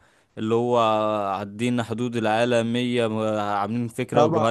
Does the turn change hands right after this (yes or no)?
yes